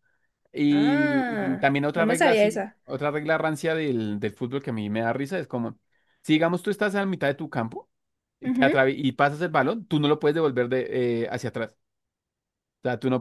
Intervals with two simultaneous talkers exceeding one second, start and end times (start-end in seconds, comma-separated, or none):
0.7-2.8